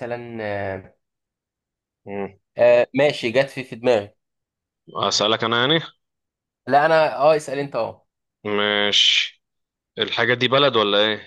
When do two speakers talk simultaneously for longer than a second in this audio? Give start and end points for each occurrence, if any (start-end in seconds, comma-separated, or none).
none